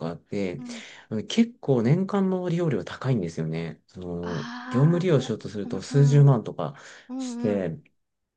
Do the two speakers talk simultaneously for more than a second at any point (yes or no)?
yes